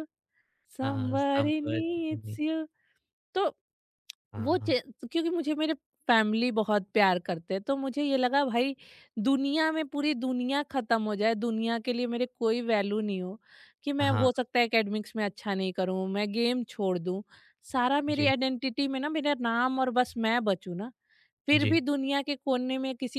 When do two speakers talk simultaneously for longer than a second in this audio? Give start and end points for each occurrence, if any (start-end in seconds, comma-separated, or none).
0.8-2.4